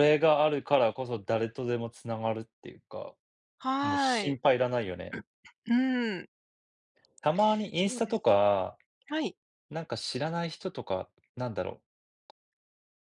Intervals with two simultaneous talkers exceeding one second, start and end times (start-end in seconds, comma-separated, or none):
none